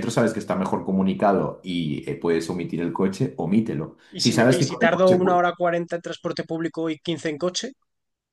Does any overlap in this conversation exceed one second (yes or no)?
yes